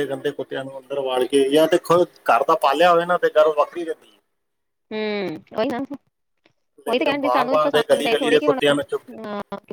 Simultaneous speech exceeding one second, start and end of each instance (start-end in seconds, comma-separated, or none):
6.9-8.6